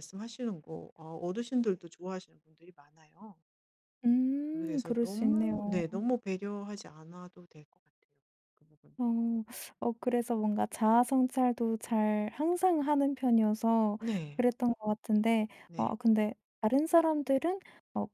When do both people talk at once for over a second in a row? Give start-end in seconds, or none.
4.5-5.8